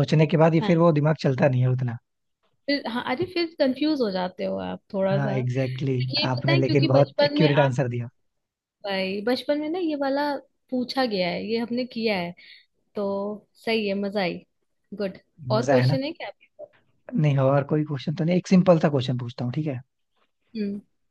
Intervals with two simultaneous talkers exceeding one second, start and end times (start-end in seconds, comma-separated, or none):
6.1-7.7